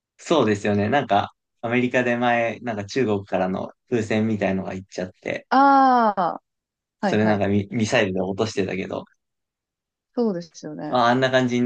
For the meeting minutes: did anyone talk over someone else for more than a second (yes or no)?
no